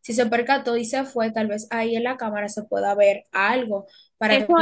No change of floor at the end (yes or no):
no